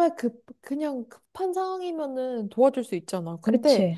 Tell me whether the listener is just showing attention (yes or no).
yes